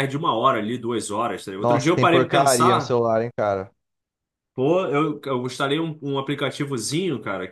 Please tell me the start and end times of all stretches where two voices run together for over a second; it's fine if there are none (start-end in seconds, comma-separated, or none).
1.6-3.0